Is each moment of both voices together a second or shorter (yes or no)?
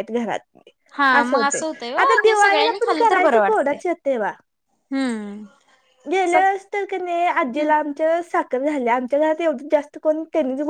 no